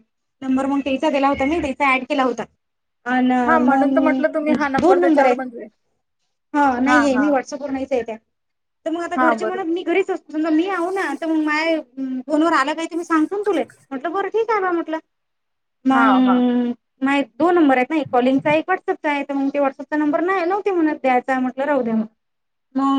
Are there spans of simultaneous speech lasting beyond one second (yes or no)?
yes